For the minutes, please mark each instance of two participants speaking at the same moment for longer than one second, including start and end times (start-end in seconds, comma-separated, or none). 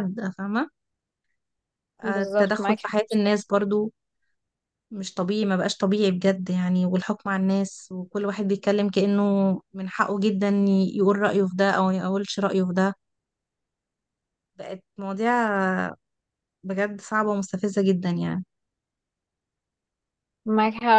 2.0-3.4